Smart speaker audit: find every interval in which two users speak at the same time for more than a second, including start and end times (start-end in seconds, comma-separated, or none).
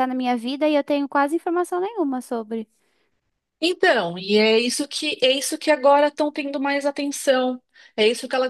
none